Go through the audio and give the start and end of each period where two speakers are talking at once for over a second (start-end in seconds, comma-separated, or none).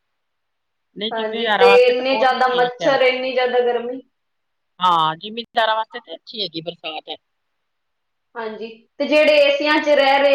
1.1-3.0